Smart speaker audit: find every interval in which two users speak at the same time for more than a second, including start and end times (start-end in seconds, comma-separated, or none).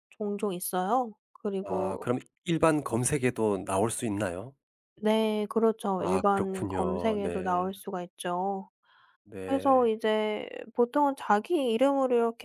6.0-7.7